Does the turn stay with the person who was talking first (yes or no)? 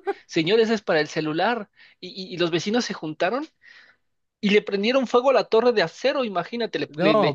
yes